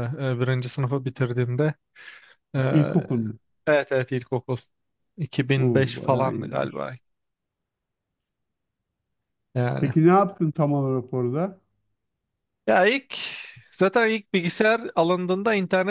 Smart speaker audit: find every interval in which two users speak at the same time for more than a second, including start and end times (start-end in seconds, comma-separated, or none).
5.6-6.9